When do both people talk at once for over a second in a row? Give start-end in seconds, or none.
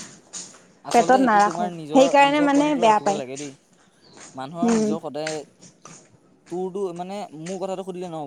0.9-3.2